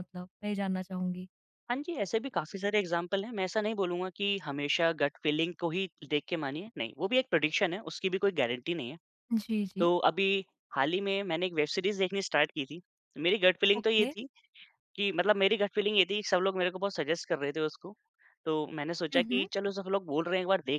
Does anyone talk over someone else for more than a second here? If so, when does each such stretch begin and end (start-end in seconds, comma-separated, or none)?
none